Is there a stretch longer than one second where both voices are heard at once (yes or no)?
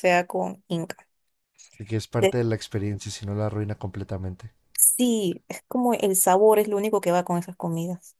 no